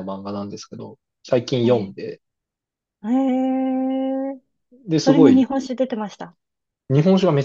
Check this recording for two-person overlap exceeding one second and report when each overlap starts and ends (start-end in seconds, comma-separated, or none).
none